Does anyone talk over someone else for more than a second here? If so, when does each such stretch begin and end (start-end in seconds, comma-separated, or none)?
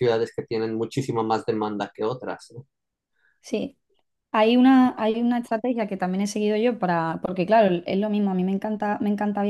none